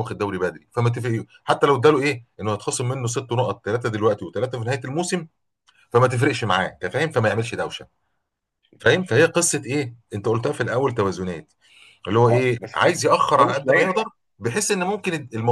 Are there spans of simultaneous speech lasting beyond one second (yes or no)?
yes